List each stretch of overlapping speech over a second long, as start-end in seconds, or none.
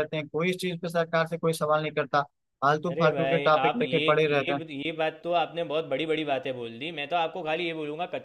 2.9-4.6